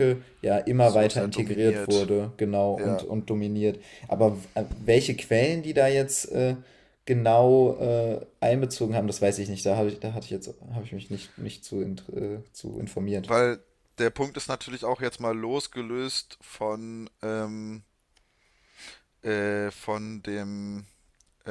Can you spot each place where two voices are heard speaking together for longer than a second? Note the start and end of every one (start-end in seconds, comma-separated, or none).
0.8-2.1